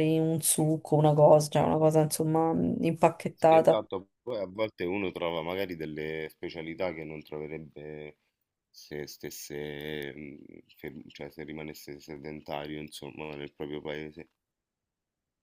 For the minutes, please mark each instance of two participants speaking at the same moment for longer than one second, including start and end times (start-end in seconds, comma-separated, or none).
none